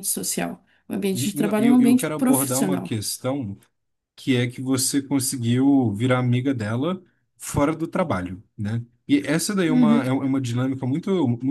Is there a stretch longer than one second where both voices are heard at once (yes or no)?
yes